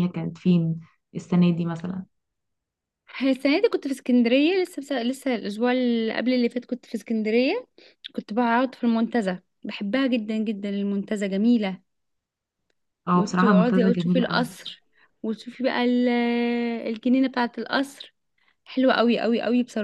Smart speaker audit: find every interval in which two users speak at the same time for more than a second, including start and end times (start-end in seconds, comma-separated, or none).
13.1-14.5